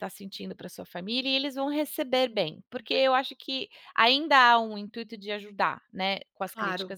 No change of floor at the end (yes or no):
yes